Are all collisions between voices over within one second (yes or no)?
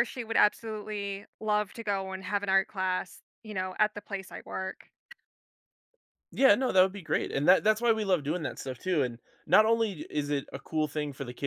yes